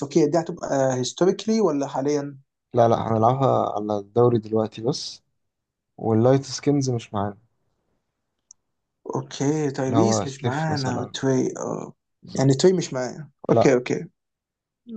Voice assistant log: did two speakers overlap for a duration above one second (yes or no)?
yes